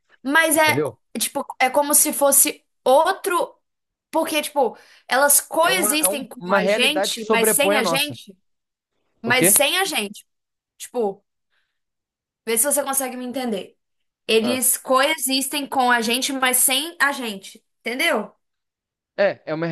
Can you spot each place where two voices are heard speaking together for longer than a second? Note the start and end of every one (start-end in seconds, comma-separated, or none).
5.6-8.2